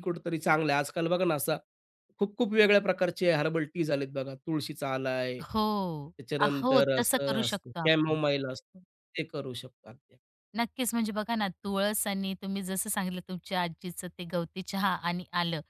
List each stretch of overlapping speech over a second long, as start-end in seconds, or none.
6.2-8.2